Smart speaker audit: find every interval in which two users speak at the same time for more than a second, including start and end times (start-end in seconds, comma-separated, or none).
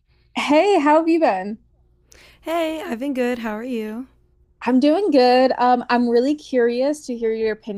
none